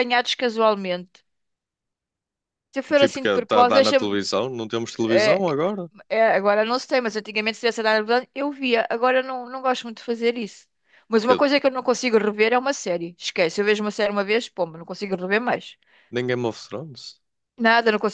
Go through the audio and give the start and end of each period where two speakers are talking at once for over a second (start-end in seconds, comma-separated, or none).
2.9-4.2